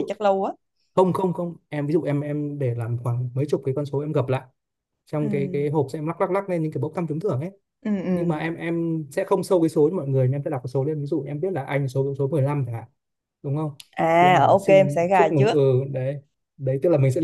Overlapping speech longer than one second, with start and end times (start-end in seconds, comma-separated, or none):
14.2-15.6